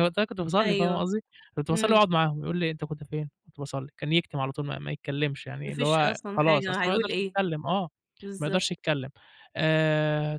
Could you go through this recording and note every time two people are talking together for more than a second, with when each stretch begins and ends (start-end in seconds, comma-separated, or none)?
5.6-7.4